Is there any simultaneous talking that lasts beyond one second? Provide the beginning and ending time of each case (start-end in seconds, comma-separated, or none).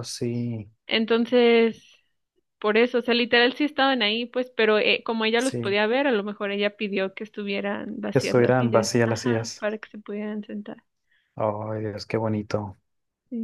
8.1-9.7